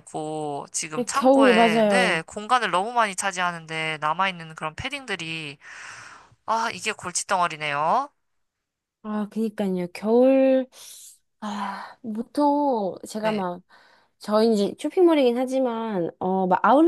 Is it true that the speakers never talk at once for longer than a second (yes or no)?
no